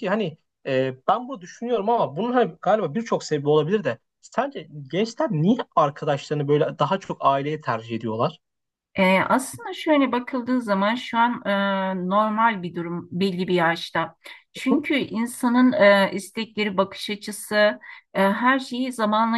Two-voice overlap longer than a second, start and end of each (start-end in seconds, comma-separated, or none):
none